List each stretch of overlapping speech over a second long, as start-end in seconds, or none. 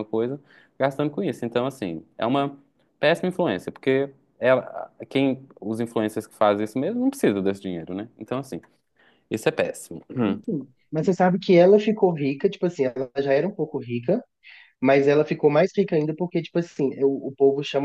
none